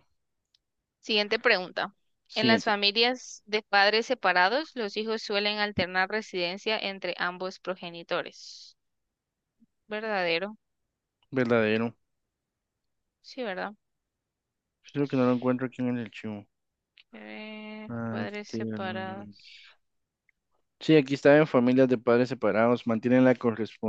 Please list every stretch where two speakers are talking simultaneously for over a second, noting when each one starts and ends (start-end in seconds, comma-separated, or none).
17.9-19.3